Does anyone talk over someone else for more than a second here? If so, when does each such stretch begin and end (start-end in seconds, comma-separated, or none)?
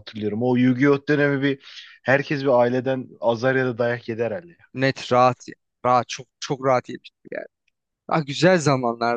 none